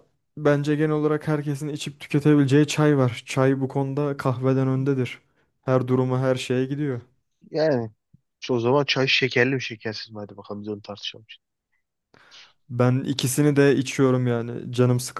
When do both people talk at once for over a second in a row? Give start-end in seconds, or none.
none